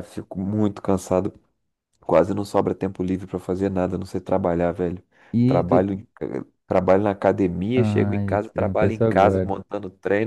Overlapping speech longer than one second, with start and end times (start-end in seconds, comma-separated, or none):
7.8-9.5